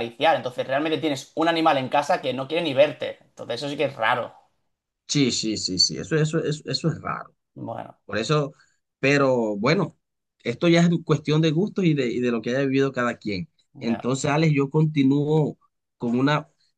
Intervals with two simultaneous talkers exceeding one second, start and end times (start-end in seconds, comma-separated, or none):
none